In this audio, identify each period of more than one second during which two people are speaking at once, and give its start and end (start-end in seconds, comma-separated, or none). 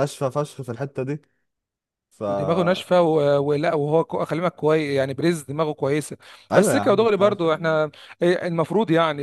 6.5-7.8